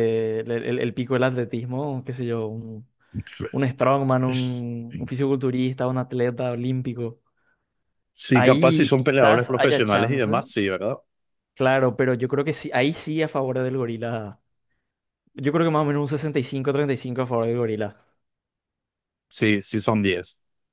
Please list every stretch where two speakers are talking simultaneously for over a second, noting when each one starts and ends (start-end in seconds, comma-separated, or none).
8.3-10.3